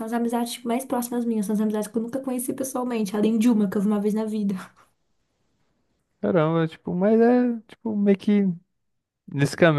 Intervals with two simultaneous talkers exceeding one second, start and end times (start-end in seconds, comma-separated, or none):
none